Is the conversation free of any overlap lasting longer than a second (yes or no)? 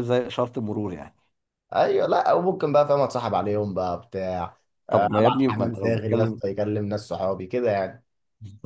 no